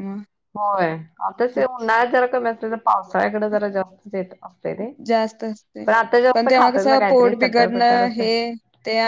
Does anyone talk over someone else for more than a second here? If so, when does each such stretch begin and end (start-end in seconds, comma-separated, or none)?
6.3-8.2